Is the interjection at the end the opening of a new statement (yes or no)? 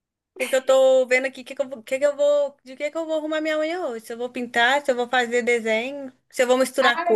yes